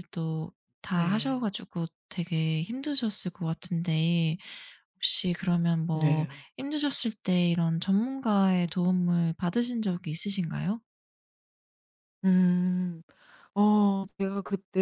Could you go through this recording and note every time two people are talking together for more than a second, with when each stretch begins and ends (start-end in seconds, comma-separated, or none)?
none